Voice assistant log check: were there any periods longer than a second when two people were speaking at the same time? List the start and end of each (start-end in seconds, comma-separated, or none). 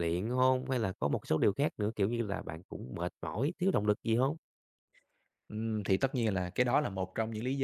none